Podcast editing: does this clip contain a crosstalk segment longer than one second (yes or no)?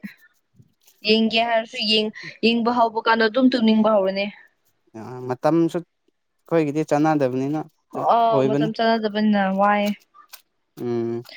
no